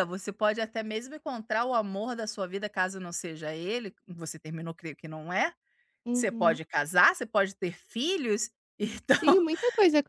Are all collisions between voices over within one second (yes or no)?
yes